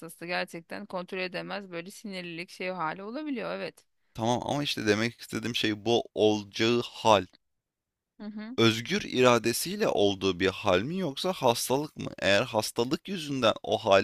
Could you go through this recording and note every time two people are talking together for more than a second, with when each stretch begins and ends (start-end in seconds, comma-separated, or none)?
none